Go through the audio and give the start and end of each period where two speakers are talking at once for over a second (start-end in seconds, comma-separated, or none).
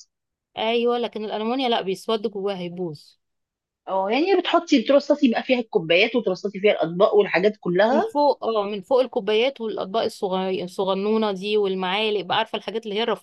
none